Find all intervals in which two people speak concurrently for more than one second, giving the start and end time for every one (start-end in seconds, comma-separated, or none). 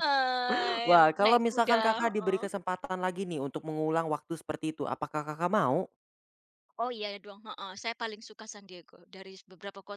0.8-2.4